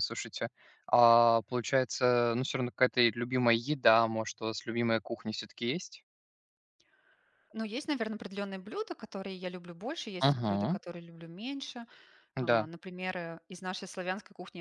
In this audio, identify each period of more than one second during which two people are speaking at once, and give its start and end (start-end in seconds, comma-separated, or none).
none